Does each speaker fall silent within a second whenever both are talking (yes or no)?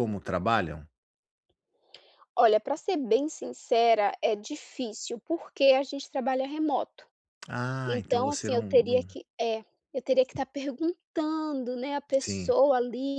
no